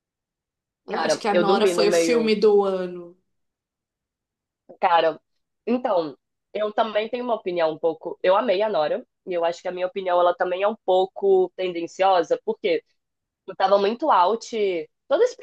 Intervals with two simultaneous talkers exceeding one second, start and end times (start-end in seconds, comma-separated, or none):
0.9-2.4